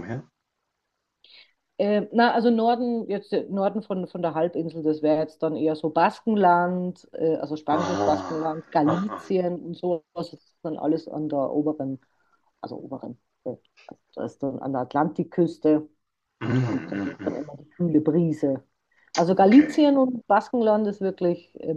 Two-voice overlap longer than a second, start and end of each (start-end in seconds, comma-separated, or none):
7.7-9.2